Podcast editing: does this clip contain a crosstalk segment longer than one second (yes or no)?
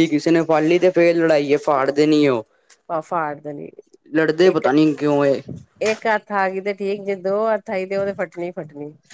no